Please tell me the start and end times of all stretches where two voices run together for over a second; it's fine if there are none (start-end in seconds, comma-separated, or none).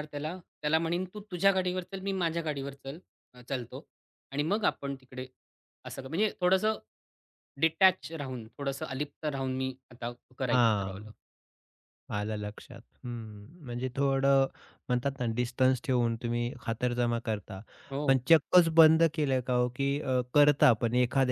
none